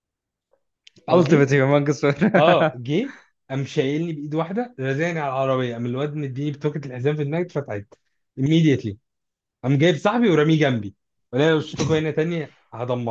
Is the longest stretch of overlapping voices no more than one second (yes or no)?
yes